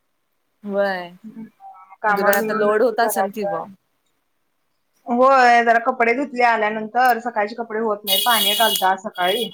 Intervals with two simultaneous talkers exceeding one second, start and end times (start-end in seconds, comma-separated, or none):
2.1-3.6